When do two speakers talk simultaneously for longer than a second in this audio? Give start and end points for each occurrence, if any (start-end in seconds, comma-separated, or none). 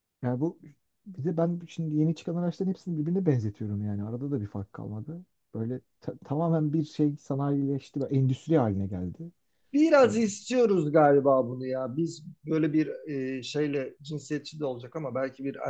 none